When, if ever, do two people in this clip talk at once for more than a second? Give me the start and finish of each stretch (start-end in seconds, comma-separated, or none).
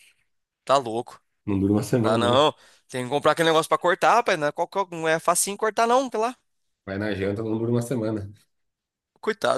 none